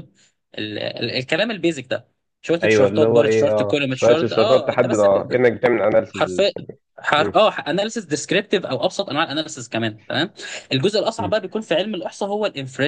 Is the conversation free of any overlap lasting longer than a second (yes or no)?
no